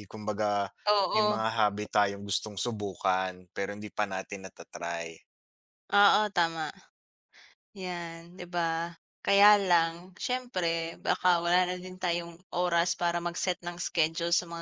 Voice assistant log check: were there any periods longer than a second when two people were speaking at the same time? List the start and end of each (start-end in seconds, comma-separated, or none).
none